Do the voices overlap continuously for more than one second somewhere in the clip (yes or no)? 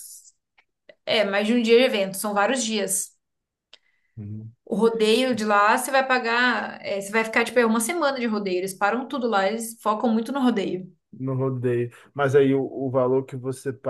no